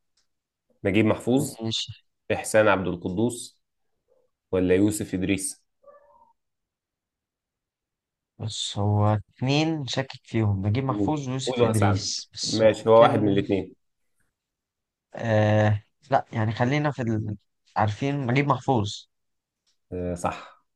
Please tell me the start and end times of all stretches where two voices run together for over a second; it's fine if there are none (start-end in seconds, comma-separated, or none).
10.9-13.4